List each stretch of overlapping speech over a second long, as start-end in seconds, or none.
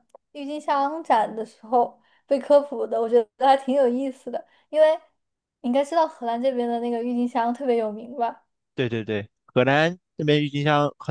none